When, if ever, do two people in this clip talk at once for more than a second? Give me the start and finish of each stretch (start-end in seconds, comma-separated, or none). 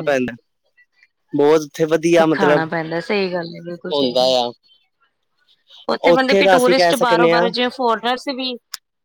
6.1-7.5